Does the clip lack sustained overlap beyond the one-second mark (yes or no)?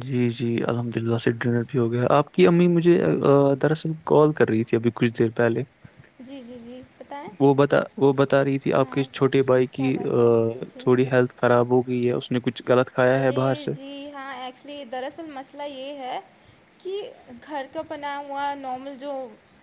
yes